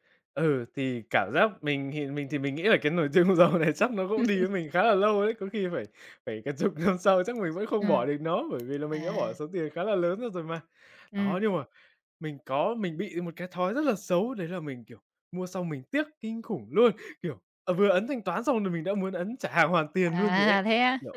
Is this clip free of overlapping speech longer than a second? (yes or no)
yes